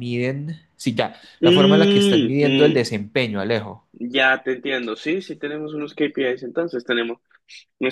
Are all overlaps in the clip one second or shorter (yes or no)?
no